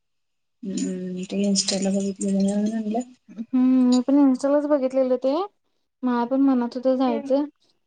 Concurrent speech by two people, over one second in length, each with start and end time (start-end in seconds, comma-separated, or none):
none